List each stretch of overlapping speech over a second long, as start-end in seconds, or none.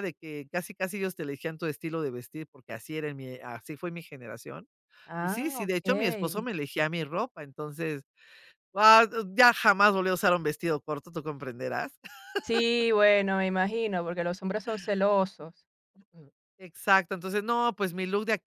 5.2-6.5